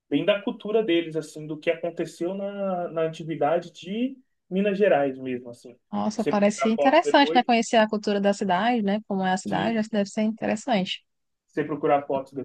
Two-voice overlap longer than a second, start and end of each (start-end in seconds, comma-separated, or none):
6.1-7.4